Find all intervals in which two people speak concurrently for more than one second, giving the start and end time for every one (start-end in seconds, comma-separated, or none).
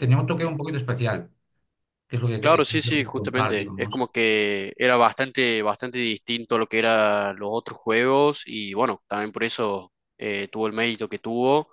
2.4-4.0